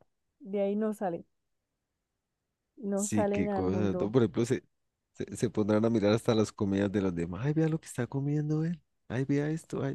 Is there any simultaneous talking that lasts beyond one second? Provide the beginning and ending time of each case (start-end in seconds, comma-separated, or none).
2.9-4.2